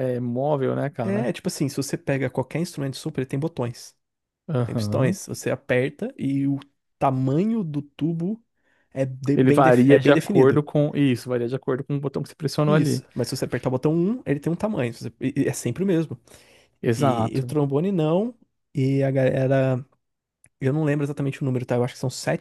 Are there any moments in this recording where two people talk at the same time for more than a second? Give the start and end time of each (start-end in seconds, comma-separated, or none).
9.3-10.6